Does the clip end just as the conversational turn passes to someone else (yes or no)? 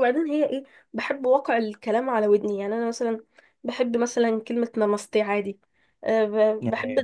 no